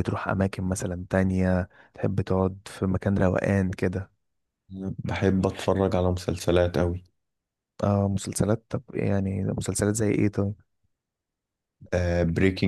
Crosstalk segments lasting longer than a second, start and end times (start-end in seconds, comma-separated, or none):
none